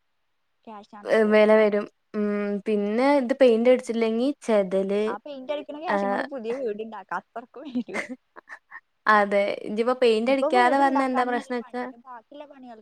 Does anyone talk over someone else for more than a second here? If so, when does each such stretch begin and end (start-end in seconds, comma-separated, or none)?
10.3-11.8